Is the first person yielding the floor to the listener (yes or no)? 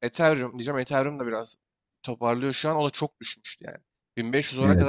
no